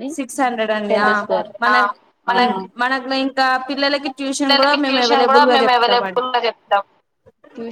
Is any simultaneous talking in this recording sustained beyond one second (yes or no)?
yes